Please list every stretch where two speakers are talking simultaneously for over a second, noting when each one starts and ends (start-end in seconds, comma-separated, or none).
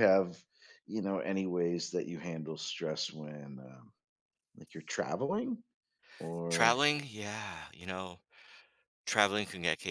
none